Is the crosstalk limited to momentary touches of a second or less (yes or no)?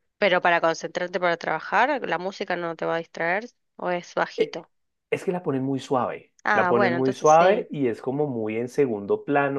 no